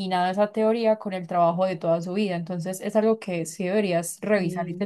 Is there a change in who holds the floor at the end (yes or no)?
no